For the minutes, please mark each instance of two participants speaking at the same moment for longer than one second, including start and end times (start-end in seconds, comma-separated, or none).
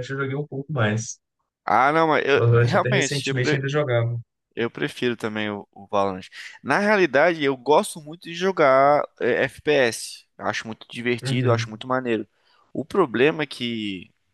2.4-3.7